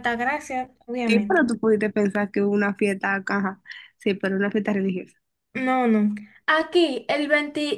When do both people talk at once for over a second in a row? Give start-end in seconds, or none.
none